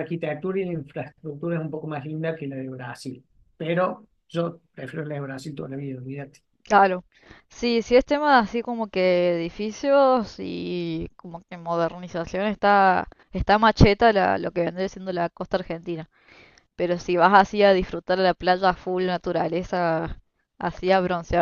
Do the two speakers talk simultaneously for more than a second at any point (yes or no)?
no